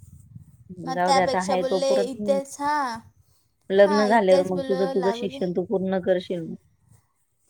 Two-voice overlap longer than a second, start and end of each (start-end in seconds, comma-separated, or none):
0.9-2.4, 3.8-5.4